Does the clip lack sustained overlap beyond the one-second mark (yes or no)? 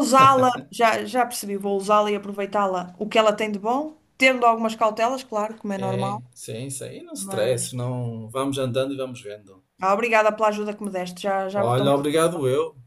yes